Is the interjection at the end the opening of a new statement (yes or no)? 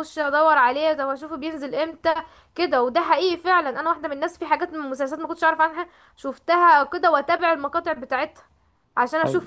no